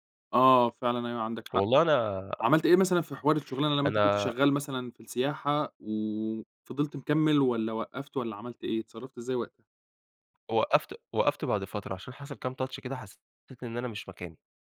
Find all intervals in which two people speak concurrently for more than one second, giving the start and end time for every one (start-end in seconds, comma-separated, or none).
none